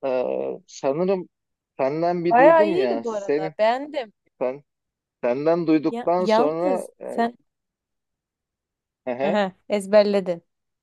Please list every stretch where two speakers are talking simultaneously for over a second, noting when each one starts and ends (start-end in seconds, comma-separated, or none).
2.3-3.5, 5.9-7.3